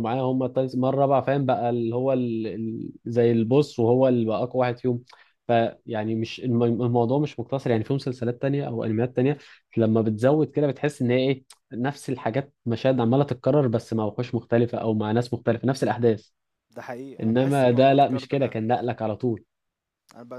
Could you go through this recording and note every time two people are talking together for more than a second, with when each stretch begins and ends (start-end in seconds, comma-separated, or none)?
17.2-18.6